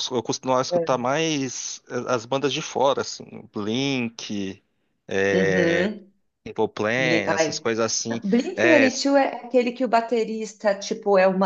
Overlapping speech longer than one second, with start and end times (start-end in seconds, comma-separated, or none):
none